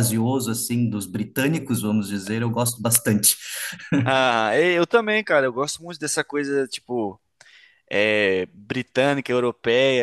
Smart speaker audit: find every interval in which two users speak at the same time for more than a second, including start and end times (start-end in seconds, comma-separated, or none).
none